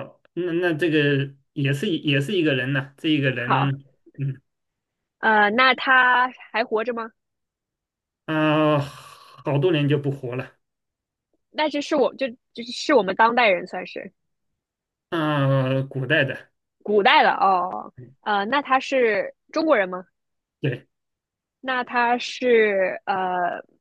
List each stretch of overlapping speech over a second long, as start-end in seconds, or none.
none